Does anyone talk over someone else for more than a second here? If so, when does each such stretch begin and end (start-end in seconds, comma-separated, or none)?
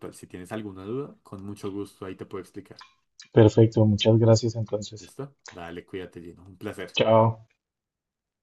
none